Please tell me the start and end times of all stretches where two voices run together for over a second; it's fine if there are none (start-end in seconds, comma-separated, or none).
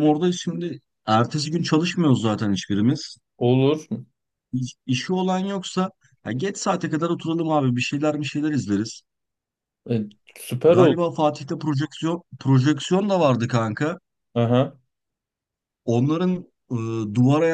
none